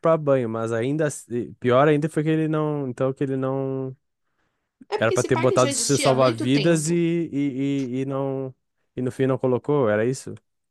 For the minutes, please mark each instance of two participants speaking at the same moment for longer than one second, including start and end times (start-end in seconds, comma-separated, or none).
5.0-7.0